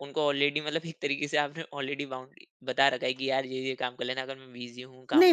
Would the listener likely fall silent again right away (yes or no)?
no